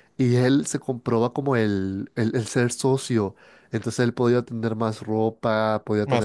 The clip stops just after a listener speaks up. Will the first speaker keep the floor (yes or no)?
yes